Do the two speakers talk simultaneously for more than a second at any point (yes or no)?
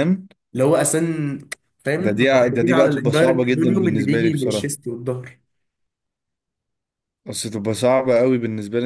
yes